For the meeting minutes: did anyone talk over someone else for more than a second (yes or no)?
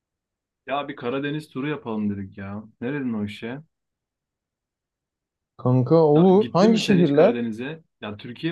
yes